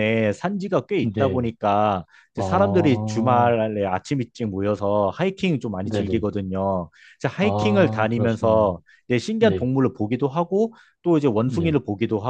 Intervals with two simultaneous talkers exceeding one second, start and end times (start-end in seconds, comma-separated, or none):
7.4-8.8